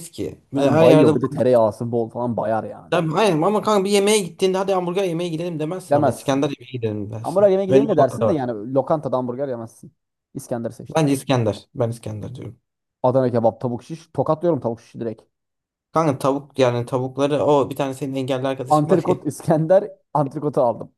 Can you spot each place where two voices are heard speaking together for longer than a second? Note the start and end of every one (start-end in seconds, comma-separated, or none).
7.2-8.4